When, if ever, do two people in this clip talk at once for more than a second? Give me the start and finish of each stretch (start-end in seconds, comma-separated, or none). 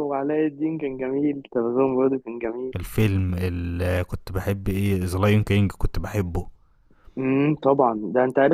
none